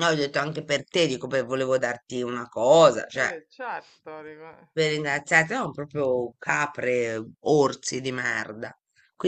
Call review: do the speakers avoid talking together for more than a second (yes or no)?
yes